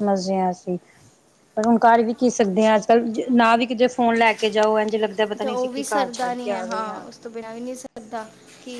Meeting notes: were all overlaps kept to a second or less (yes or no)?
yes